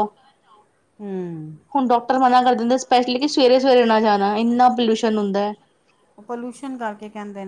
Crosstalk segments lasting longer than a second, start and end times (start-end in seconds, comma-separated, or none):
none